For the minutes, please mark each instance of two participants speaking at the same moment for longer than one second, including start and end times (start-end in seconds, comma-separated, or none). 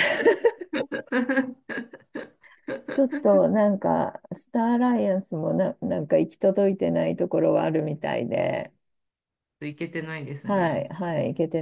none